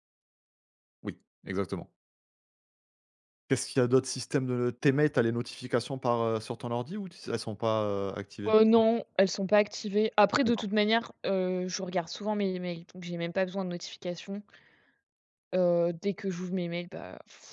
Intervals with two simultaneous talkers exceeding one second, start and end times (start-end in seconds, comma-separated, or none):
none